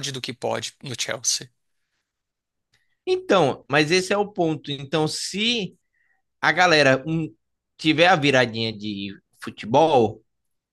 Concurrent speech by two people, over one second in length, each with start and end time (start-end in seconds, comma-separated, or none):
none